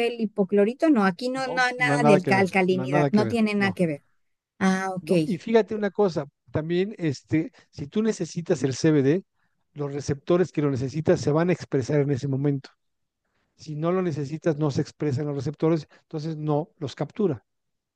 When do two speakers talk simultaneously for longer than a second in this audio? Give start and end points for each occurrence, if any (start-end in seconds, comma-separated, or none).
1.4-3.8